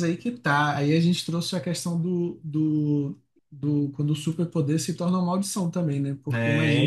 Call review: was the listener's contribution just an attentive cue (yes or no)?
yes